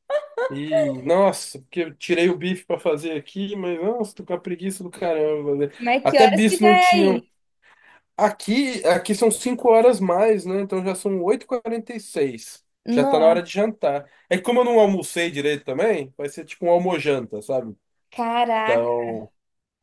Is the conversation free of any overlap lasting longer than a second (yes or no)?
no